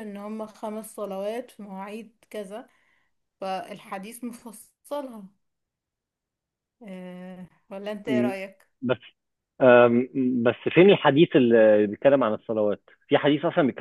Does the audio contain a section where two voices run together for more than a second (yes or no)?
no